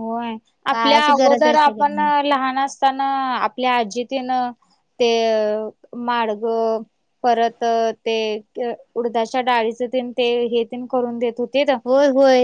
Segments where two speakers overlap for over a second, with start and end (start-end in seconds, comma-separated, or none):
0.7-2.1